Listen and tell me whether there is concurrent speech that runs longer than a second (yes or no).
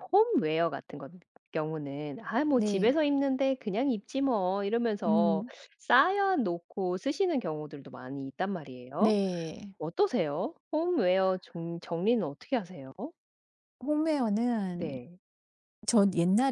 no